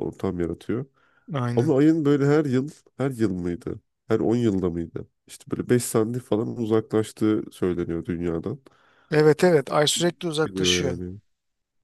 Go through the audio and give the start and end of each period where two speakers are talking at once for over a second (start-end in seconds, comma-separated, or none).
none